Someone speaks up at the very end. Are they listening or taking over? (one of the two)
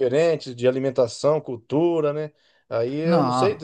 listening